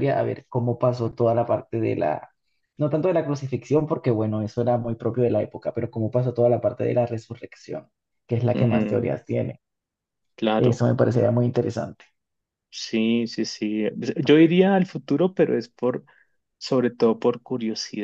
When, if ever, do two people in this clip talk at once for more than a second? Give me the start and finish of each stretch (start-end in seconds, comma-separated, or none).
none